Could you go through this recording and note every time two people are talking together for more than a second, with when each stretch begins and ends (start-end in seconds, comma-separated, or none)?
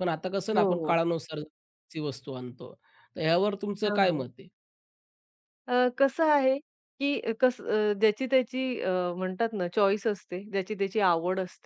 none